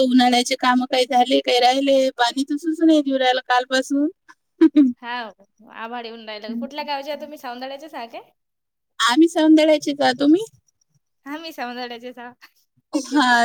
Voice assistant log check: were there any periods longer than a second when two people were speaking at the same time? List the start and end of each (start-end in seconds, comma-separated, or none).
none